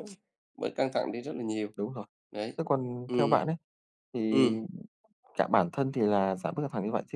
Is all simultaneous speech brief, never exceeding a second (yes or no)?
yes